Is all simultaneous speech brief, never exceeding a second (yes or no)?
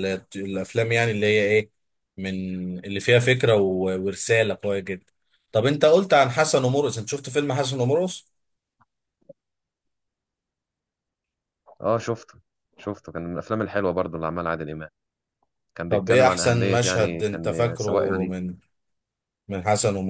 no